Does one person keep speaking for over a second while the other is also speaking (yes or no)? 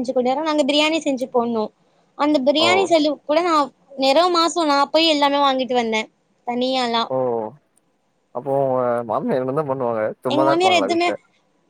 no